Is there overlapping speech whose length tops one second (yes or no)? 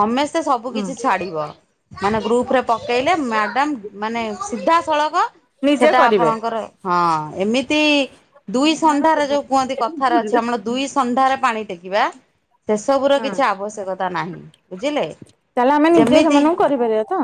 yes